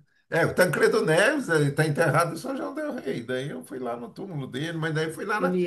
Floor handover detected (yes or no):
no